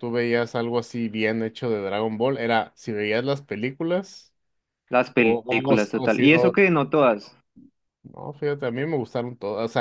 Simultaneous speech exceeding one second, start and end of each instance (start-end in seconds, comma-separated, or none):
5.2-6.6